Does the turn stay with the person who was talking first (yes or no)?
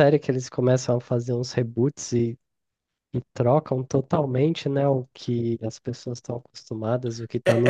no